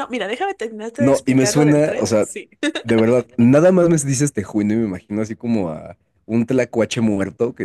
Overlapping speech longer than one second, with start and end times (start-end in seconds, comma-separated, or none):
1.0-2.3